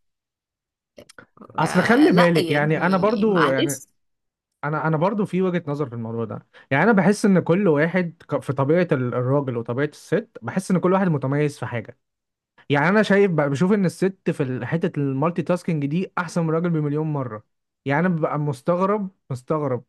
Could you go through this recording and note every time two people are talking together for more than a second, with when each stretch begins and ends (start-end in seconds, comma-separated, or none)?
1.6-3.8